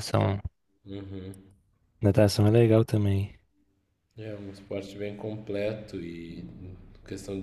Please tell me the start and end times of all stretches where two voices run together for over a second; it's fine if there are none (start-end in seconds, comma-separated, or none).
none